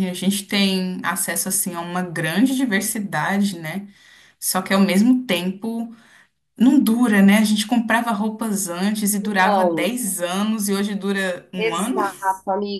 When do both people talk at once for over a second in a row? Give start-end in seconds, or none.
none